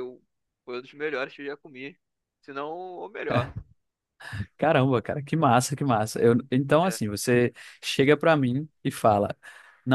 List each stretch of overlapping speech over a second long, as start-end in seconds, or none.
none